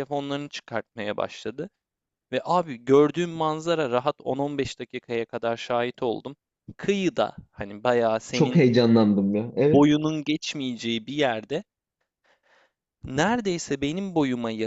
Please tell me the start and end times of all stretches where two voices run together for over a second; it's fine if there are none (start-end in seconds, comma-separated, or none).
none